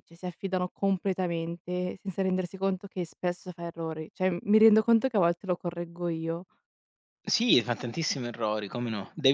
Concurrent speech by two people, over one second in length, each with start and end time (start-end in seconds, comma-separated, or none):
none